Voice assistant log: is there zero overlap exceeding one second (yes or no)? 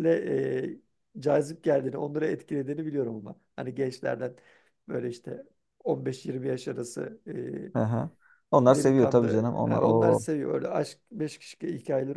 no